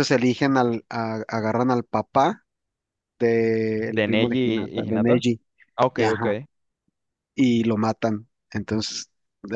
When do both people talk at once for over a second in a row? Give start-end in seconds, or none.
3.9-5.2